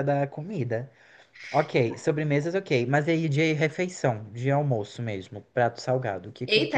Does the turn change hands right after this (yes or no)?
yes